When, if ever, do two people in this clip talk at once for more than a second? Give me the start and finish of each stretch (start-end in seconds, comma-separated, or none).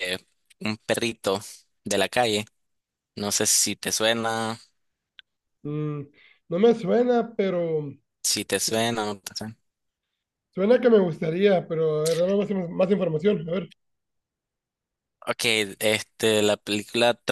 none